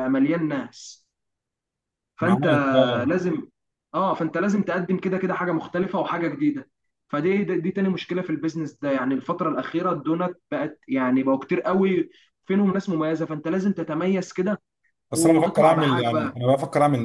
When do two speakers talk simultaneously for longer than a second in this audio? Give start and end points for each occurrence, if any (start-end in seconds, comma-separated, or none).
15.1-16.4